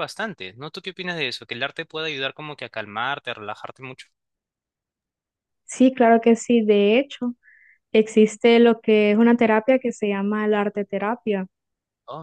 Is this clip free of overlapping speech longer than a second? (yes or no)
yes